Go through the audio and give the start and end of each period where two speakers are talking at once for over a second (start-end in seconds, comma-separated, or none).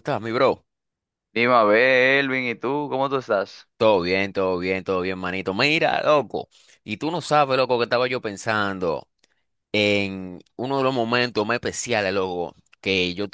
none